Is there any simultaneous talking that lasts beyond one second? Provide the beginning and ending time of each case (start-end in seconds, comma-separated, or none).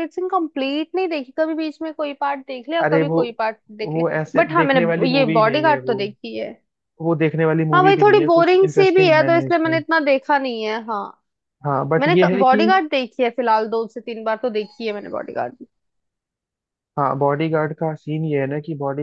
3.8-6.0, 7.7-9.8